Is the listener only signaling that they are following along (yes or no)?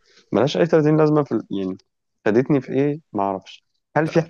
yes